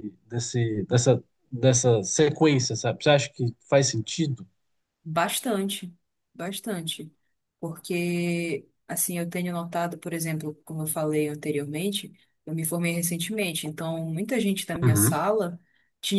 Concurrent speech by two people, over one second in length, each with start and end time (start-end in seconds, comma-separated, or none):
none